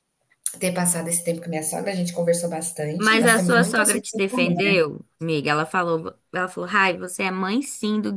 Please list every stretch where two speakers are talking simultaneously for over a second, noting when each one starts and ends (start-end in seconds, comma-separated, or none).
3.0-4.8